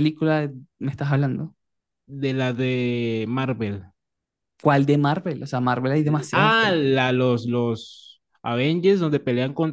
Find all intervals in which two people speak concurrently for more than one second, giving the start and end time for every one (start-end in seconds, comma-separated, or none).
none